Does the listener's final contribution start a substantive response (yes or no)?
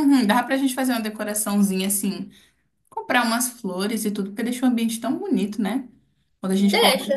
no